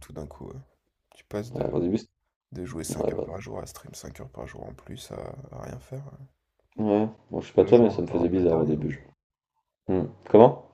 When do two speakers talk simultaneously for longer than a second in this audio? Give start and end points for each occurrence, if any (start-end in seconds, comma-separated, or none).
7.6-8.8